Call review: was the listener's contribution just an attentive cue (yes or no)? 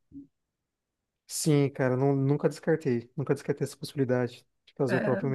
yes